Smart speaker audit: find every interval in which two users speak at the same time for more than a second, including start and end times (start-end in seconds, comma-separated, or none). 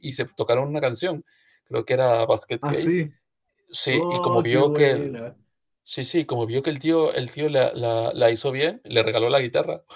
3.9-5.2